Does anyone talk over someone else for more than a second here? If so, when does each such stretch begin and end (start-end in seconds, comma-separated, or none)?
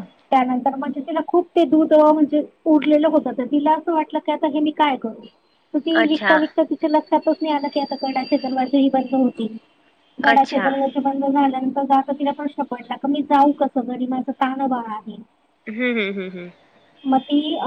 none